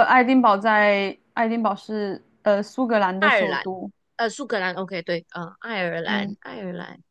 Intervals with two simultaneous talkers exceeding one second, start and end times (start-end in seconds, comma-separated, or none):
none